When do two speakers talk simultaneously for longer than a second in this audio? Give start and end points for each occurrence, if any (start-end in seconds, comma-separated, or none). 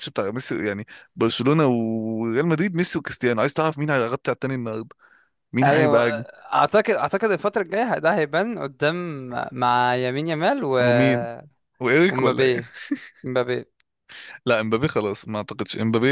none